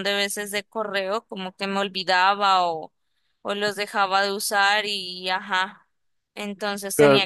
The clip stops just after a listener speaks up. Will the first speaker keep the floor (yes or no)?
yes